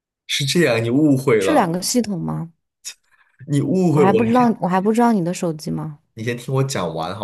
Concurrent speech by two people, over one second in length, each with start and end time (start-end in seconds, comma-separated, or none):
none